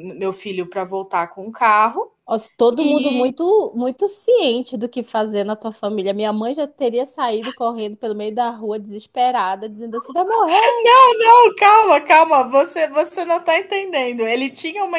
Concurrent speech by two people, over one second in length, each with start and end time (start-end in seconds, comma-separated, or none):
none